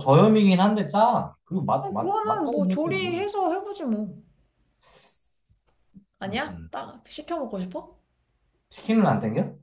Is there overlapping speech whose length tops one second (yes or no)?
yes